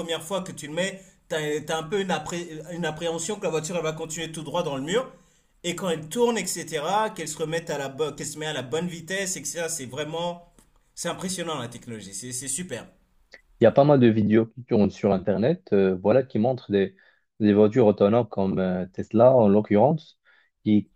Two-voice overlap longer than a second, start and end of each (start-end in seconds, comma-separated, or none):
none